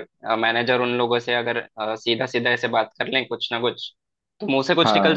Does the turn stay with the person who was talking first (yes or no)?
no